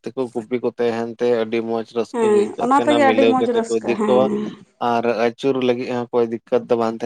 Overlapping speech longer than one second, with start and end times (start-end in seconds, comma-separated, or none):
2.1-4.2